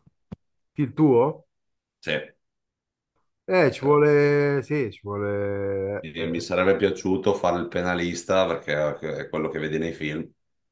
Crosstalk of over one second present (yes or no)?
no